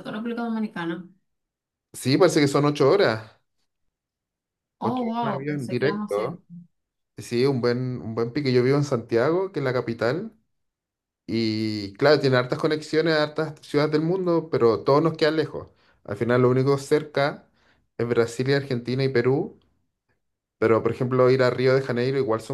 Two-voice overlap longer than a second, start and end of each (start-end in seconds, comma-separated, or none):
4.8-6.2